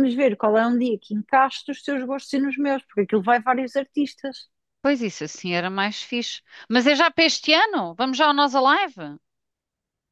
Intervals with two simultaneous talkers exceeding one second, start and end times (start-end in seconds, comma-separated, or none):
none